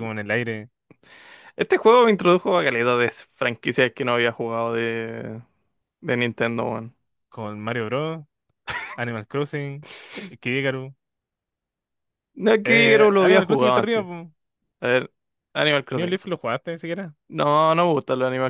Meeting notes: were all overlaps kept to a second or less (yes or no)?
no